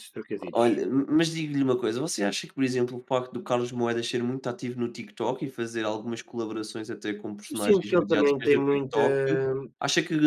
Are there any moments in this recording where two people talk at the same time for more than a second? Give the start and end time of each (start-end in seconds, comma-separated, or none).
7.5-9.0